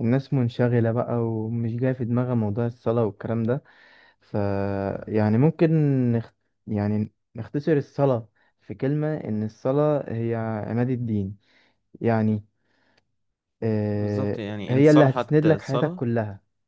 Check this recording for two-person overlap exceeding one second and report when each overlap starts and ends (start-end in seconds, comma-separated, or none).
13.9-16.0